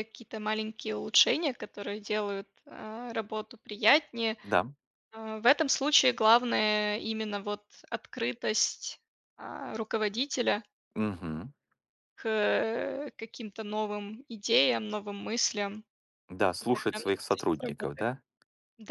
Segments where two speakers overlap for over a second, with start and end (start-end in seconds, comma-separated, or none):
16.6-18.1